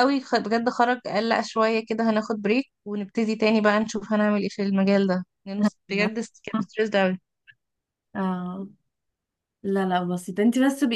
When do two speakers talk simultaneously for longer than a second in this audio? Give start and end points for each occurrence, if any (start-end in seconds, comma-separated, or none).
none